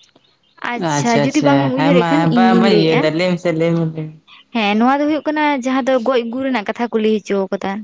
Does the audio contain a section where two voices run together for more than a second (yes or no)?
yes